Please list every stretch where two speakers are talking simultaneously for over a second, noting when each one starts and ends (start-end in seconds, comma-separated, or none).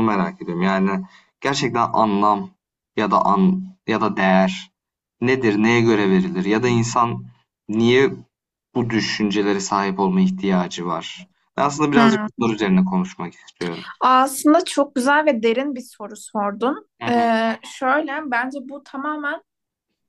none